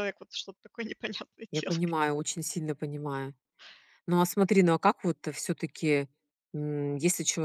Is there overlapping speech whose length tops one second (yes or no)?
no